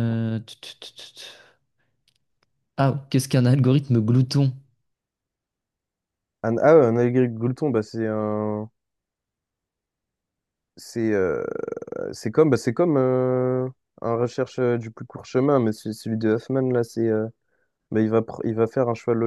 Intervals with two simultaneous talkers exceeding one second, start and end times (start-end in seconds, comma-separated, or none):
none